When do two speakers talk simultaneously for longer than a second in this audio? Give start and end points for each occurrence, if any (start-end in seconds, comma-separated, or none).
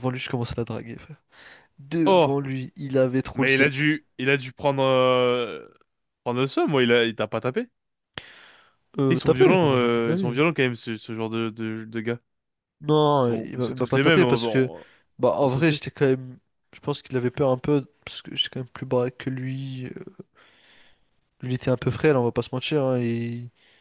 9.1-10.4, 13.3-14.7